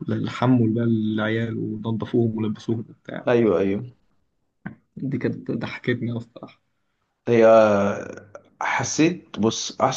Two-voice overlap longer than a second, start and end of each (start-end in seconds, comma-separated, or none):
none